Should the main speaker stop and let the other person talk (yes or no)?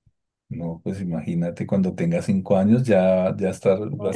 no